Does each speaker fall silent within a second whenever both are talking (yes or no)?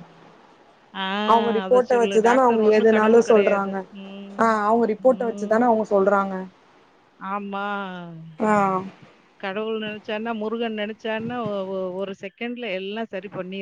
no